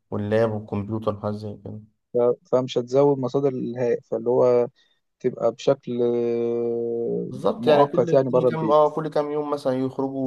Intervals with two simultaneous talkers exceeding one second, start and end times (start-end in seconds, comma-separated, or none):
7.3-8.9